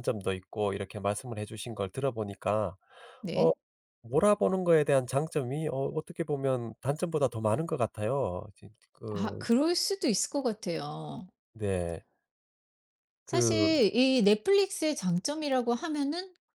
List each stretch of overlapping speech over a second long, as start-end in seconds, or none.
none